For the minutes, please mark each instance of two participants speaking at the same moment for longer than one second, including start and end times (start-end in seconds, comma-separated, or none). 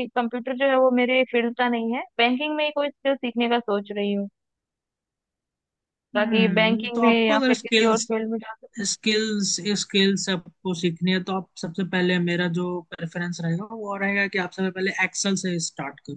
6.2-8.1